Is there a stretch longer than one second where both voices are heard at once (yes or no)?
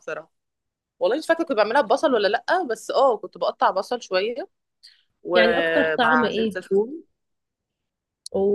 yes